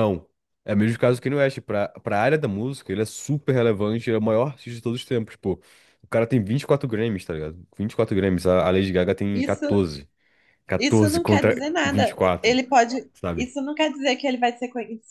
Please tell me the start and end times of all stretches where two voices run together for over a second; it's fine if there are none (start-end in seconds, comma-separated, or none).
10.8-12.6